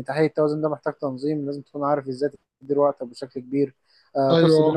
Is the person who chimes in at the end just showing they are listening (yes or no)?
yes